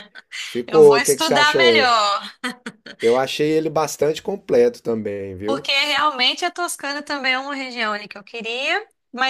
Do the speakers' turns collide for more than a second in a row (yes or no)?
yes